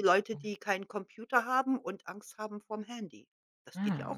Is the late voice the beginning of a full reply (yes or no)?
yes